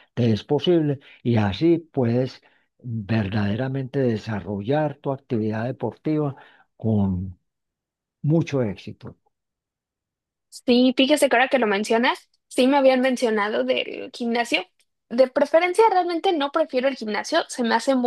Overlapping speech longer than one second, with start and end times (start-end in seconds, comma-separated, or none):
none